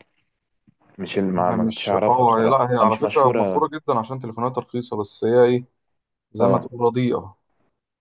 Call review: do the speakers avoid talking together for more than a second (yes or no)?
no